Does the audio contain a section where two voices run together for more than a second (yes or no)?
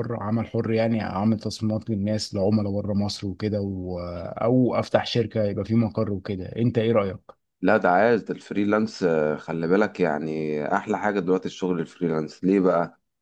no